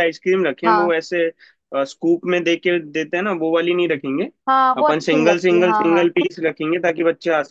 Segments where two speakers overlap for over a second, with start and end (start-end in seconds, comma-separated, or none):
4.8-6.1